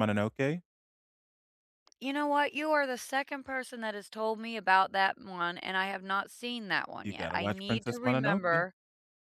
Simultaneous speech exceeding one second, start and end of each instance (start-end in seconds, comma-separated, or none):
7.0-8.6